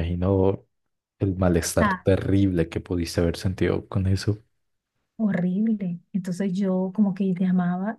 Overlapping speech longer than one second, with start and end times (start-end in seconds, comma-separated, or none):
none